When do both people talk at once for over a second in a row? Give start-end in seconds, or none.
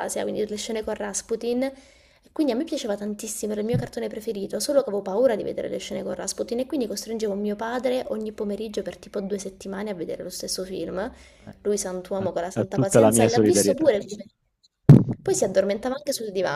11.6-13.9